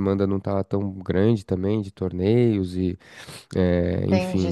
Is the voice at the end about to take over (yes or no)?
yes